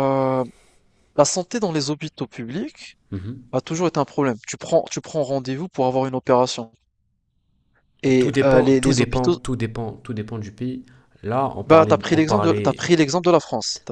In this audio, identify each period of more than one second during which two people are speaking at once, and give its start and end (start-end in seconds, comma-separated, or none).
8.2-9.4, 11.6-12.9